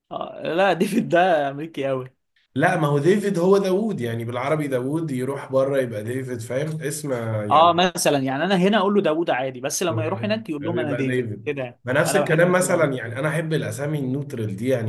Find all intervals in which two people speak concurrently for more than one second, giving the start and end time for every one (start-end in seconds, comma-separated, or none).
10.6-12.9